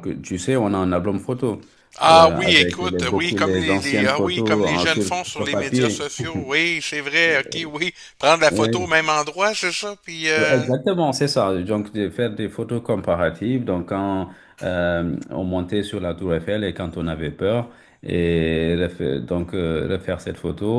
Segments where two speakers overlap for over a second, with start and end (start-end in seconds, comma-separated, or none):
2.1-6.1